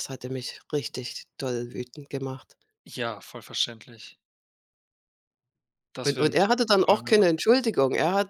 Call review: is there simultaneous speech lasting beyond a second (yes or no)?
yes